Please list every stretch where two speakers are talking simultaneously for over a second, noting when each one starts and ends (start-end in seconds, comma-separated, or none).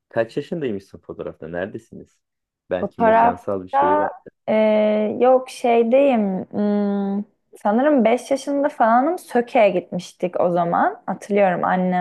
2.8-4.1